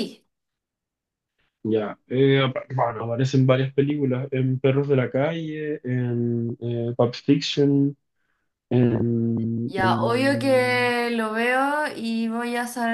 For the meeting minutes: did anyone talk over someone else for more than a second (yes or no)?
yes